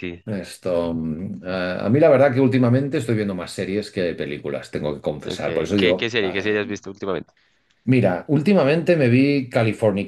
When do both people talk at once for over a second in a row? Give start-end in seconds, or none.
5.2-6.6